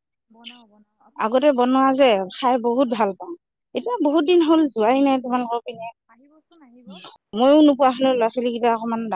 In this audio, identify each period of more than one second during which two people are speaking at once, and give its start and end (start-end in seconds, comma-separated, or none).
none